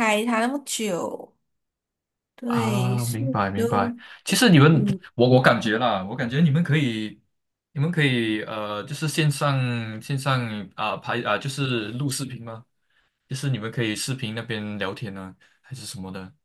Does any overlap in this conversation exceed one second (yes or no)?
yes